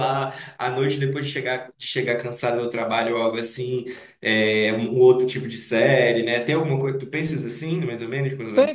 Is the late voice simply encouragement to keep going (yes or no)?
no